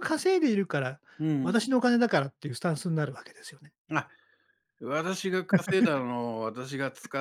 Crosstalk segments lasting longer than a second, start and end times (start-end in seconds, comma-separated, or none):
none